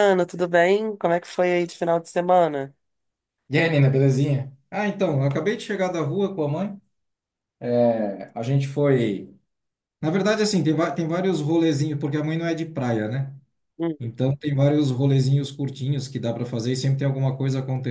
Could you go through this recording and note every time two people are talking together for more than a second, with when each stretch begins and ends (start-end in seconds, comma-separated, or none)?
none